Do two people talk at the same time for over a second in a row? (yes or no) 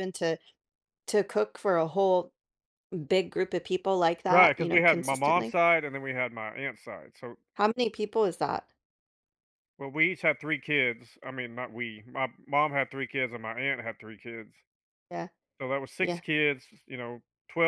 yes